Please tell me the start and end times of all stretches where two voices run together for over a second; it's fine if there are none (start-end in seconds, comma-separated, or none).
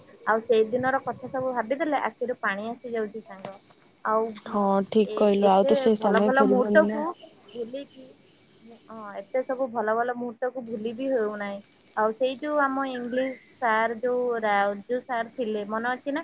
5.2-7.0